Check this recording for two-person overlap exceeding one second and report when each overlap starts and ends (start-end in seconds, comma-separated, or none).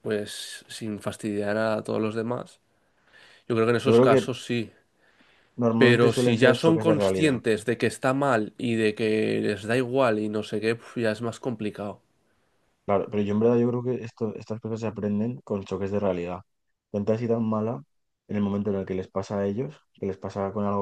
5.8-7.4